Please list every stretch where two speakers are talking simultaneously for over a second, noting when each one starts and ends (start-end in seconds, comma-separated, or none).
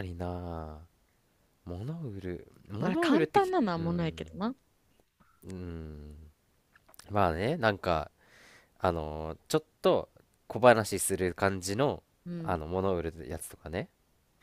2.8-4.2